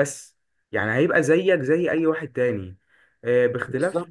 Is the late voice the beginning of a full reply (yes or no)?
no